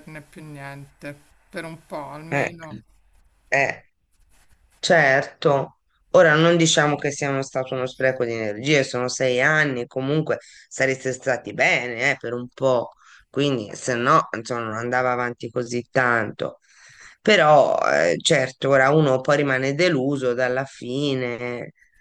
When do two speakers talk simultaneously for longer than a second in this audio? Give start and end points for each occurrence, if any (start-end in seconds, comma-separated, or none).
none